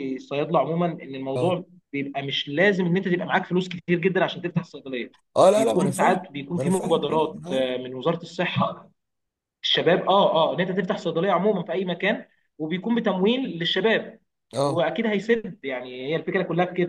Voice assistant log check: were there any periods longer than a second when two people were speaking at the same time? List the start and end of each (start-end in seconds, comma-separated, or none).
5.5-7.7